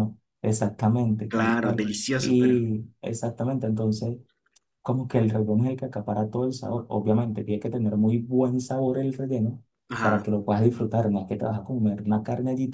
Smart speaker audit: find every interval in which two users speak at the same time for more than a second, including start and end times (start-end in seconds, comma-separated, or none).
1.3-2.6